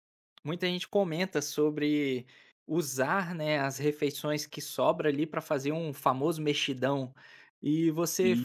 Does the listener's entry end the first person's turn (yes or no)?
no